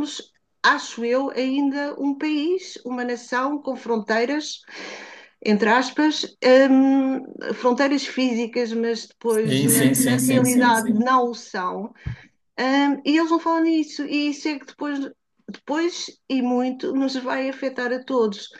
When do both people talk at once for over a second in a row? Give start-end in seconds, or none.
9.3-11.0